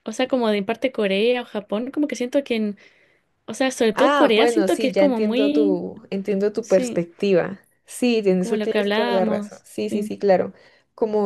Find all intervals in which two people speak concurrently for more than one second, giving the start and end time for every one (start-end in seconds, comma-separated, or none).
3.9-5.8, 8.4-10.1